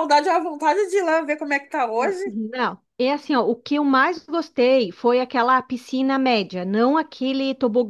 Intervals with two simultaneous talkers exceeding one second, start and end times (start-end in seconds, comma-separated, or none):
none